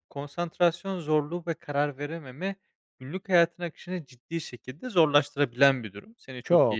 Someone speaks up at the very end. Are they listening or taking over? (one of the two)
listening